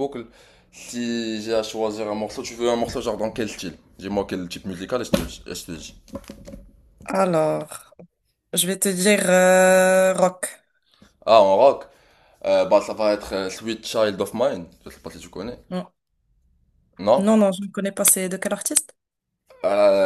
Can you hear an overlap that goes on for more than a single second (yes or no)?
no